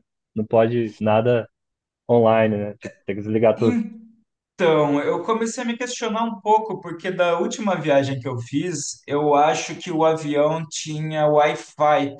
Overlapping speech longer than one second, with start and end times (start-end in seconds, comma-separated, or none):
none